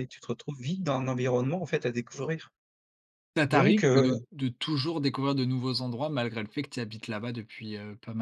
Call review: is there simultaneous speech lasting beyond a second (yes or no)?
no